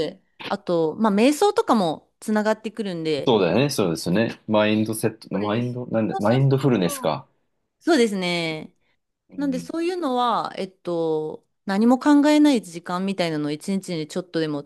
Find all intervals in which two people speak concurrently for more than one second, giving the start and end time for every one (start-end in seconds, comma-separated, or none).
5.3-7.2